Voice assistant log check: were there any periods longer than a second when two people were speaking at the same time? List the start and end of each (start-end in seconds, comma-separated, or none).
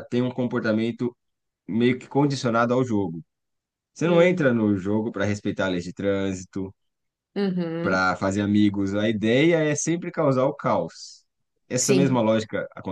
none